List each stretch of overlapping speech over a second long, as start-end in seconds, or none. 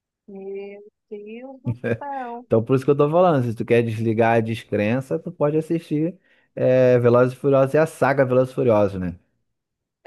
none